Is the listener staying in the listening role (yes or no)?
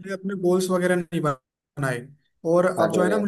yes